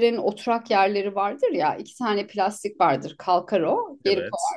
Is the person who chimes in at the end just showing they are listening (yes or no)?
yes